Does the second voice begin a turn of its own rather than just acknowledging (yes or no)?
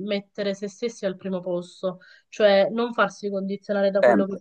no